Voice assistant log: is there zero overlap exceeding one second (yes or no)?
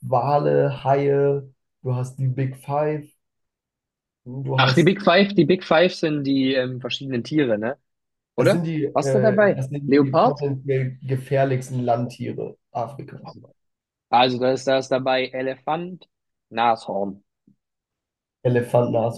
no